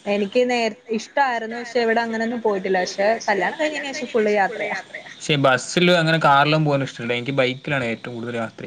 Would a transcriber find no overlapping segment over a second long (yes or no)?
yes